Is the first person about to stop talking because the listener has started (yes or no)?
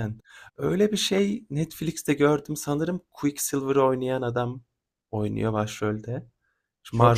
yes